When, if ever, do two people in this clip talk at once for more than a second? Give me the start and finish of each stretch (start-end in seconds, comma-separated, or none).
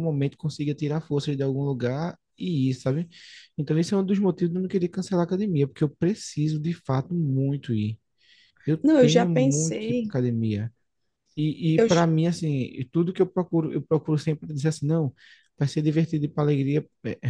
8.8-10.1